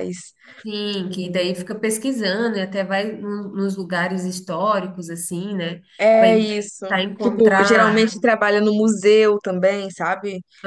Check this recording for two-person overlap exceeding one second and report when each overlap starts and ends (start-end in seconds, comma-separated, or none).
6.2-8.1